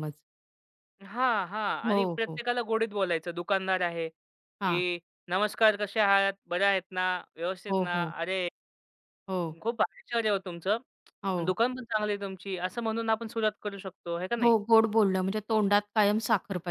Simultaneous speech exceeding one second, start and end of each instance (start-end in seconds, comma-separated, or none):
none